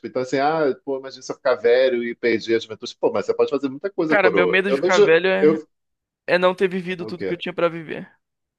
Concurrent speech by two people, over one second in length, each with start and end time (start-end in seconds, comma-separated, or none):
4.1-5.6